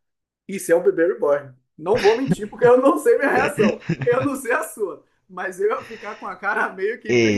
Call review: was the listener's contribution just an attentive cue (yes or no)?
no